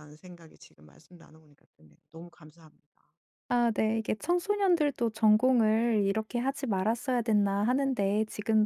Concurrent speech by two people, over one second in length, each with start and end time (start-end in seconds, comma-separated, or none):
none